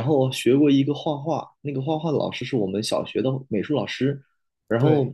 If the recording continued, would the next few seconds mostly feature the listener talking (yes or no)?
no